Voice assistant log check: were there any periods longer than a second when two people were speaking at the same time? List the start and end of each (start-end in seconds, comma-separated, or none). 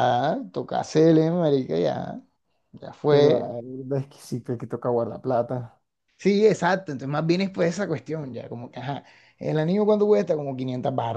none